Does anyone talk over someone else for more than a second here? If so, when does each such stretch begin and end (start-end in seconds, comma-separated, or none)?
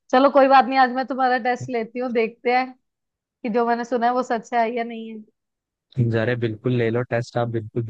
none